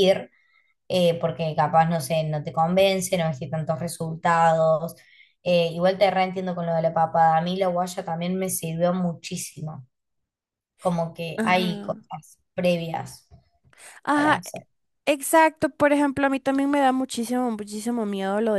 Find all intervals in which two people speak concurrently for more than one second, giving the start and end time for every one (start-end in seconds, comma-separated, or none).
none